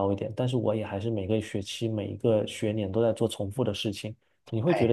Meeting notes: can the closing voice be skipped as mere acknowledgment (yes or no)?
yes